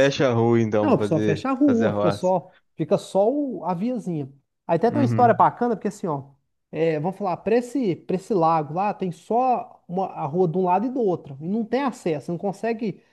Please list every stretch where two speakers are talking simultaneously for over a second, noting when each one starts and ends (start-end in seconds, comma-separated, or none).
0.8-2.3